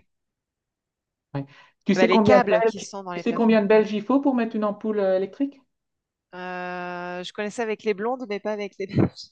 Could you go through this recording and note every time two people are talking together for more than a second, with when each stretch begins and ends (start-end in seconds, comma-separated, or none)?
1.9-3.6